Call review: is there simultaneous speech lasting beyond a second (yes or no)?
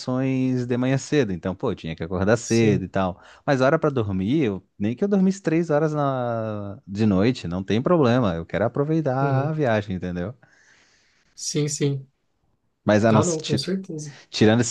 no